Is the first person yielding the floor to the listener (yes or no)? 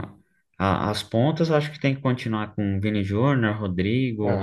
yes